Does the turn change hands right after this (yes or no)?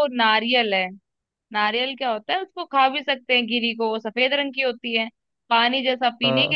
no